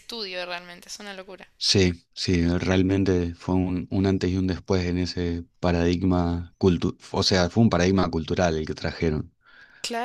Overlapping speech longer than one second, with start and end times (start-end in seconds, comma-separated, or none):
none